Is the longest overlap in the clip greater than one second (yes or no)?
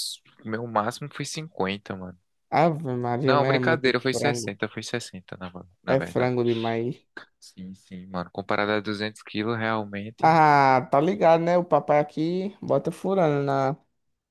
yes